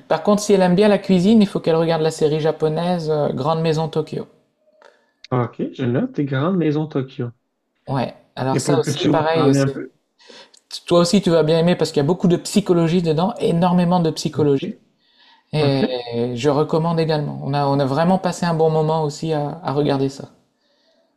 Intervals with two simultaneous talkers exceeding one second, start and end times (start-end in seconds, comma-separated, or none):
8.5-9.8